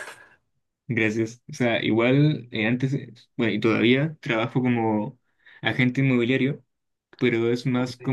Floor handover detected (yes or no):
no